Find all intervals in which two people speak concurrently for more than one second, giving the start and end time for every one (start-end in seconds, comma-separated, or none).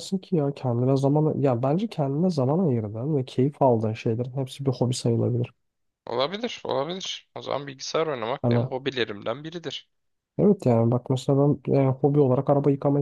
none